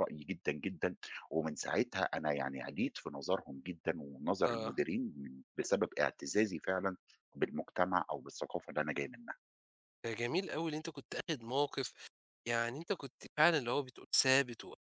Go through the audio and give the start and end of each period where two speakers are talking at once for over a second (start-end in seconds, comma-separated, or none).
none